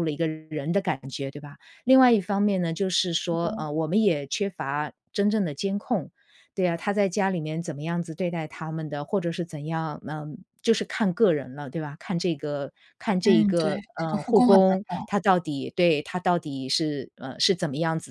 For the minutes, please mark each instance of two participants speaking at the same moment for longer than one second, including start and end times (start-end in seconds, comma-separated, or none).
13.2-15.1